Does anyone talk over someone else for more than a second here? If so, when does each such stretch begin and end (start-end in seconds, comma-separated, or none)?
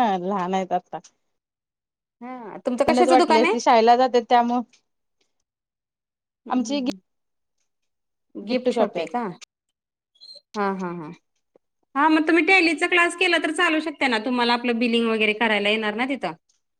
none